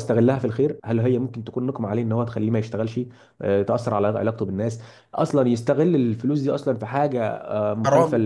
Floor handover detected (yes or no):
no